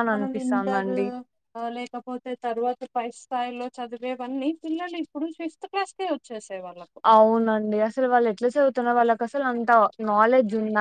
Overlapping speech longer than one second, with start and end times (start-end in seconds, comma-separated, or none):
none